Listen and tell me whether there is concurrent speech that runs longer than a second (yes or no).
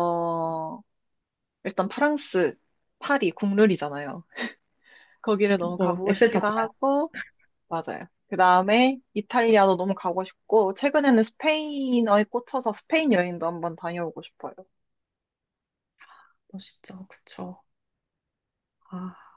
yes